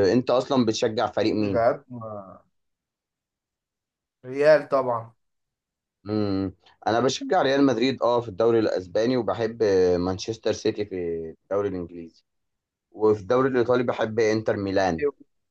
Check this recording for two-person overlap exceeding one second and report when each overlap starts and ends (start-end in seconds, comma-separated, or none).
none